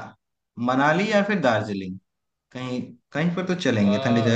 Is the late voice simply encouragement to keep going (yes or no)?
yes